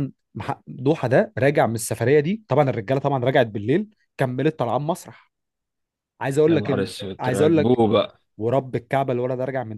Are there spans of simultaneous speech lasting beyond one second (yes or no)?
yes